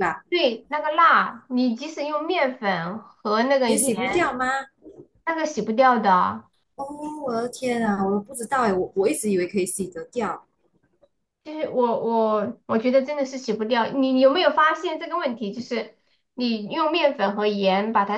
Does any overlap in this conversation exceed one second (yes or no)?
no